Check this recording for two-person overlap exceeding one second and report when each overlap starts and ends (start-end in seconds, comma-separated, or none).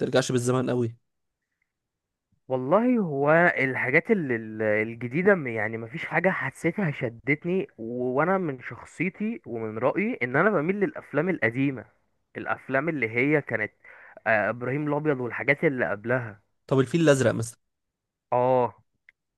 none